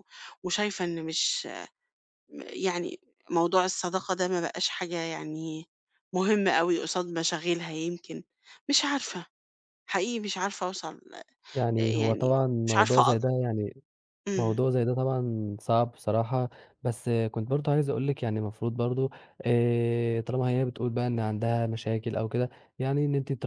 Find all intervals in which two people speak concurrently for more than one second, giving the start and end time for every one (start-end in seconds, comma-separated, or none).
11.8-13.2